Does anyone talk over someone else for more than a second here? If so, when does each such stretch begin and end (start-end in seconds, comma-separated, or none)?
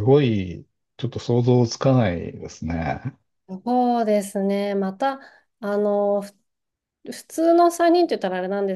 none